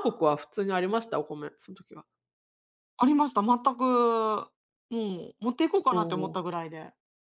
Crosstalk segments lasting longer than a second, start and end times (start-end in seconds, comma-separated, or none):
none